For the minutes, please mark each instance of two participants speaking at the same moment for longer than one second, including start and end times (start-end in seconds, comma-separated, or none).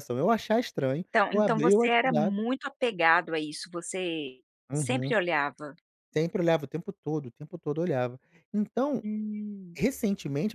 1.0-2.4